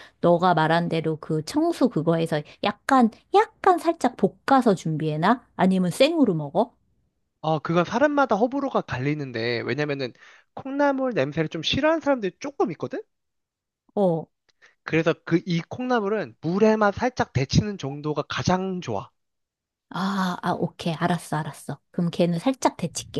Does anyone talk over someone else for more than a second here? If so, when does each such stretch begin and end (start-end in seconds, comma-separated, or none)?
none